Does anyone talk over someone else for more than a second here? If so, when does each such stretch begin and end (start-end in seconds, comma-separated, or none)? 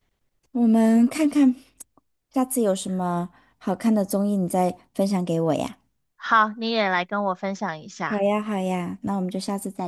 none